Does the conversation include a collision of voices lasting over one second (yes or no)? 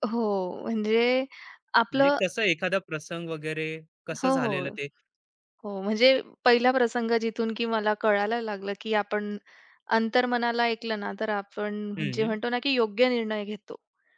no